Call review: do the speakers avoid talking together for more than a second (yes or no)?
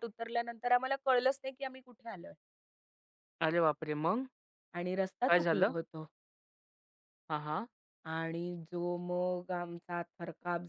yes